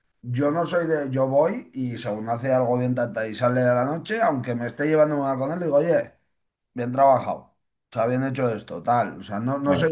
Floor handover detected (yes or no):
no